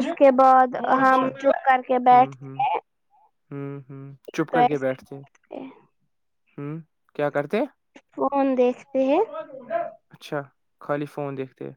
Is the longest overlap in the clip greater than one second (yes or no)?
no